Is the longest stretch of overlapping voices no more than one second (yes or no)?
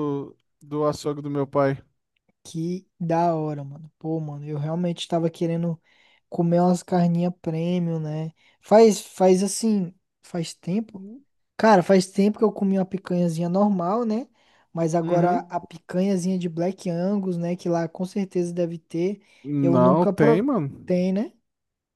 no